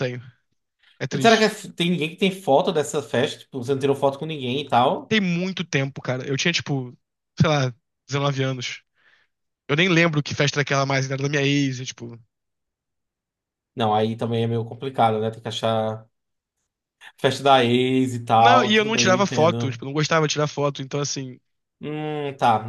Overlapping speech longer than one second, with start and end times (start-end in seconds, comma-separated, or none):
18.4-19.8